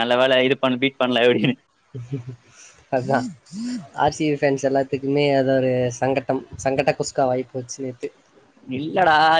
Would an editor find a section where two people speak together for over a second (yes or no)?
no